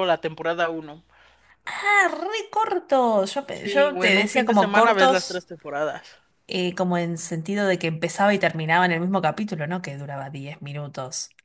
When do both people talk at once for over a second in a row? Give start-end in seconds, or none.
3.5-5.4